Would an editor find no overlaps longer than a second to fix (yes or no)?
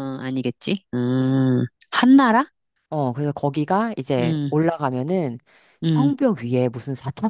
yes